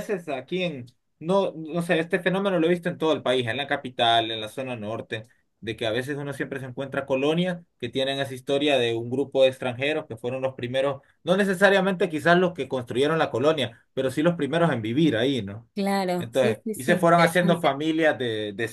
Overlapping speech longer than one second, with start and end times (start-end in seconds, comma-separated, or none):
16.2-17.8